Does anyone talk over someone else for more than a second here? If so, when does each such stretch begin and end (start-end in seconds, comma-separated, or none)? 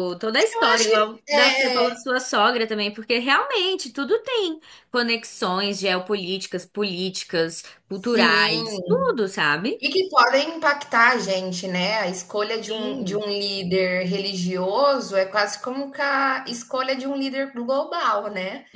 0.5-1.9, 7.9-9.2